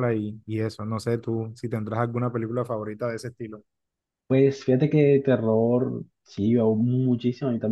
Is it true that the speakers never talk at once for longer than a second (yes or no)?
yes